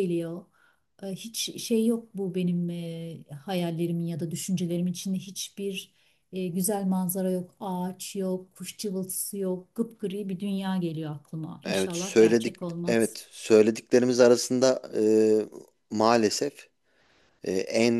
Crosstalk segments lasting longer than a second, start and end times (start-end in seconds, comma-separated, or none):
11.6-13.2